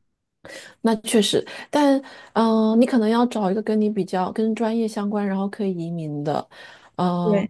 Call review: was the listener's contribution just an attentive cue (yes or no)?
yes